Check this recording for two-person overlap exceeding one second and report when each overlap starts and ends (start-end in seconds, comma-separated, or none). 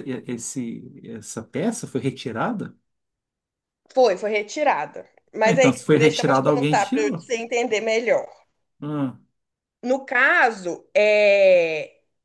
5.4-7.3